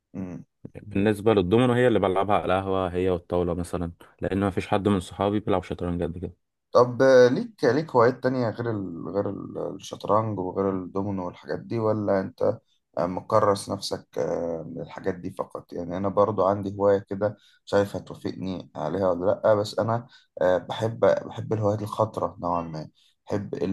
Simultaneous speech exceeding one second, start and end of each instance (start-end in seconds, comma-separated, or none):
none